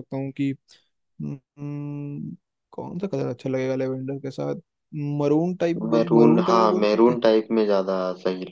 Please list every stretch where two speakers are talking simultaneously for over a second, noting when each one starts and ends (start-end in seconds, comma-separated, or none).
5.9-7.2